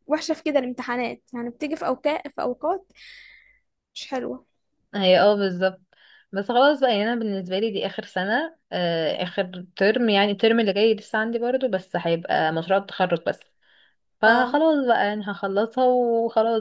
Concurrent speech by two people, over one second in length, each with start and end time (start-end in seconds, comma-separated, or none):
none